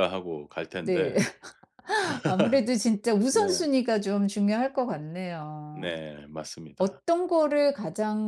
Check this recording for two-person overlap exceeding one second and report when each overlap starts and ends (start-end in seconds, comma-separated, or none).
none